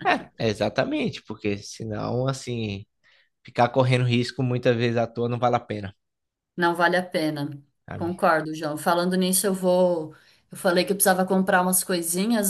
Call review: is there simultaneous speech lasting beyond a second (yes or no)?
no